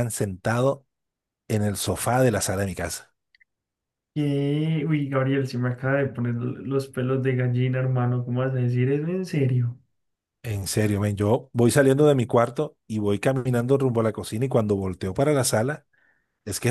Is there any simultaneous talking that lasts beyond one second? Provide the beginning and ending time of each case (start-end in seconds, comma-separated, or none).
none